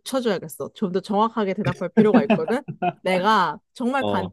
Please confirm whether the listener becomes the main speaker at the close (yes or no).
no